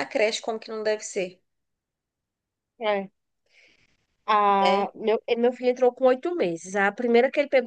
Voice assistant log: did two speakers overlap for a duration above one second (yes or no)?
no